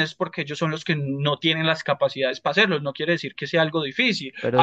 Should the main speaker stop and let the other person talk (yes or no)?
no